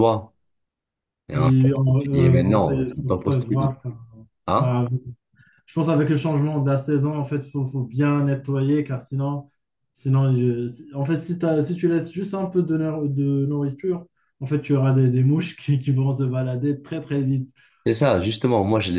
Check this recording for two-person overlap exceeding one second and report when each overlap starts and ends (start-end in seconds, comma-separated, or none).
1.3-3.7